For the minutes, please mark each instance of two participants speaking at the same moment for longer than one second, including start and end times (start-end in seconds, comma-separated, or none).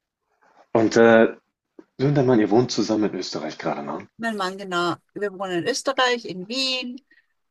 none